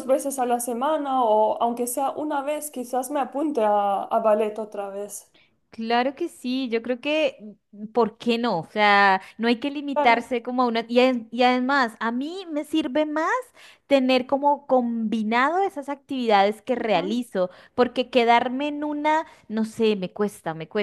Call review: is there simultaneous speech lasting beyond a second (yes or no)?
no